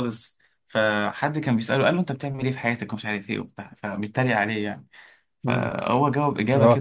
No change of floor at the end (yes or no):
no